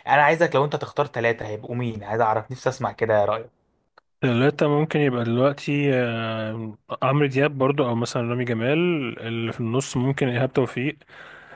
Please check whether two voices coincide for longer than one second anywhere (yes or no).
no